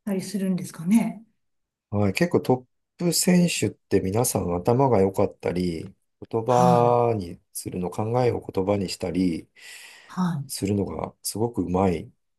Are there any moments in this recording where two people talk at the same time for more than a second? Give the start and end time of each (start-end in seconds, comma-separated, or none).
none